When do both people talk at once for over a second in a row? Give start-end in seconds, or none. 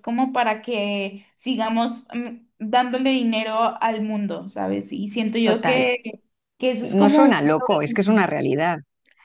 6.8-8.2